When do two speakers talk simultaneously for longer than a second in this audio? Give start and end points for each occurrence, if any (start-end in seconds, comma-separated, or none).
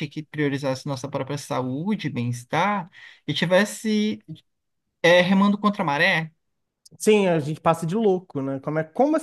none